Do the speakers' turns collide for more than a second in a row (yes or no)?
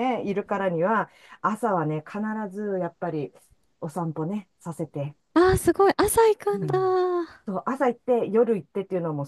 no